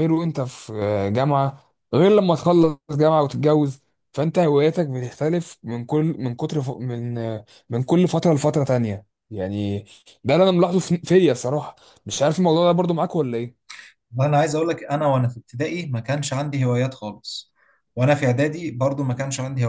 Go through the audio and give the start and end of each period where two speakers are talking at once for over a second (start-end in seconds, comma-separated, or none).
none